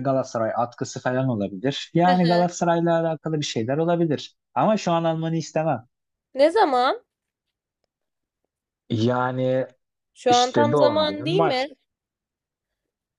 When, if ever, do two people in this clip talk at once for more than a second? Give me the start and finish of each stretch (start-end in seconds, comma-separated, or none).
10.3-11.7